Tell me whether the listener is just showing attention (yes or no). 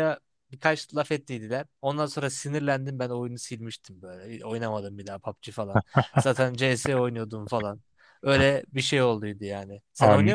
no